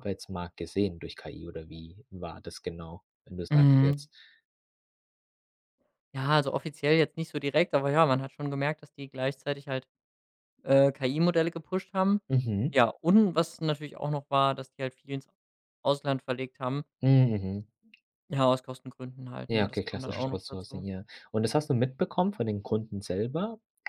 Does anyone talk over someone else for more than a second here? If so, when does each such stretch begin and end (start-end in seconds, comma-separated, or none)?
19.5-20.9